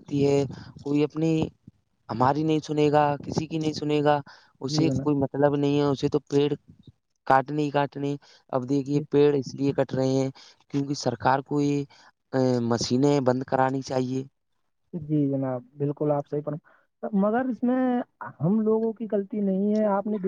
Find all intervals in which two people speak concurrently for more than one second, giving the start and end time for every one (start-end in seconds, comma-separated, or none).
none